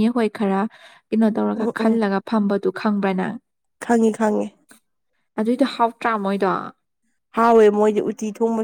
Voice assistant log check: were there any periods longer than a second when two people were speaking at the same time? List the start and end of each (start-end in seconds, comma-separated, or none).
none